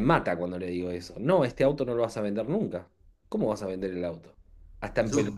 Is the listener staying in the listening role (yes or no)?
yes